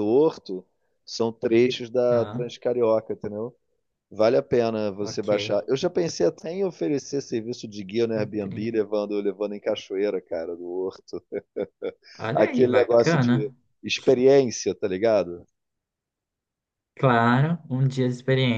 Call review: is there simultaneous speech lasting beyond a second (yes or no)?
yes